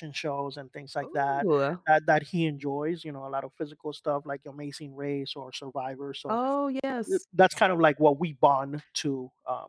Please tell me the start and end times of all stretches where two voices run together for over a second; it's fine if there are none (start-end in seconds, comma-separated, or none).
none